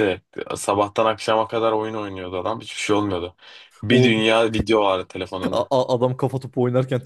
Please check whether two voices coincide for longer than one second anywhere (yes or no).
no